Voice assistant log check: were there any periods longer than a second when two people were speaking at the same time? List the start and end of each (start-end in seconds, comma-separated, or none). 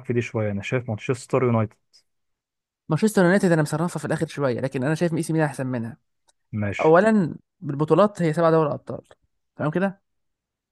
none